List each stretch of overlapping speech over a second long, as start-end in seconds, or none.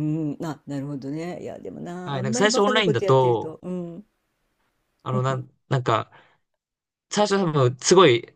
2.0-3.6